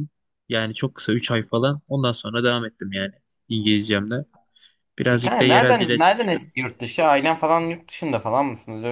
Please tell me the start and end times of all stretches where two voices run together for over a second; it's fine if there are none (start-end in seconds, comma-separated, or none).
5.1-6.5